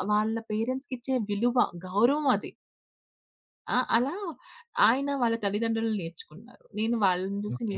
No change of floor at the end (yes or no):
yes